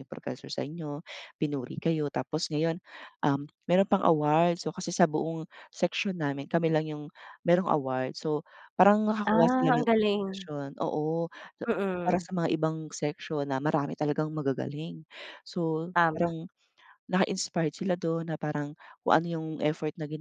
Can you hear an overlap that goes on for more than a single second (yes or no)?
yes